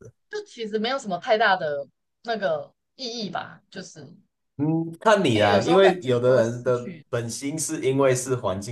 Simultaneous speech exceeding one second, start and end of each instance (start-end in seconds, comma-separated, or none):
5.3-7.1